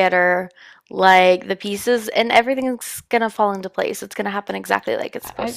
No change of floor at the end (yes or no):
no